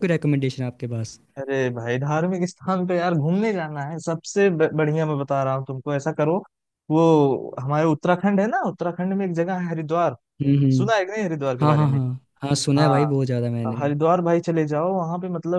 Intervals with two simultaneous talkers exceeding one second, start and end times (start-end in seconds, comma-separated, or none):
none